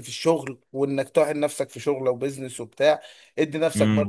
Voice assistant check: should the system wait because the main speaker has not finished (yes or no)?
yes